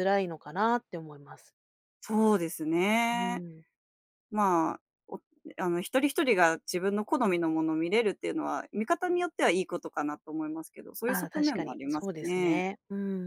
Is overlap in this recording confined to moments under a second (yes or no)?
no